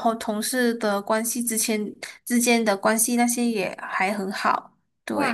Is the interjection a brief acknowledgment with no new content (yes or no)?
no